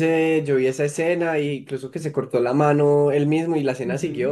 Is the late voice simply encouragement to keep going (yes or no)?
no